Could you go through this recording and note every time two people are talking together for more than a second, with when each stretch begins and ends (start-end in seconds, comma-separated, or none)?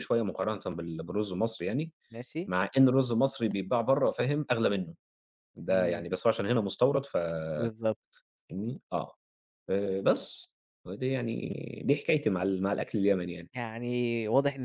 none